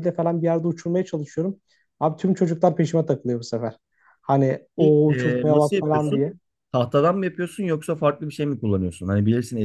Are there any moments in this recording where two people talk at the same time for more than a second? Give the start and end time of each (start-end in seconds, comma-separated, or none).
4.8-6.2